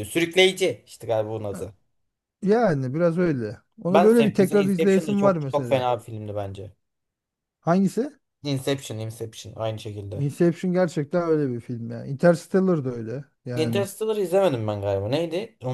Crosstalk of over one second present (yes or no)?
yes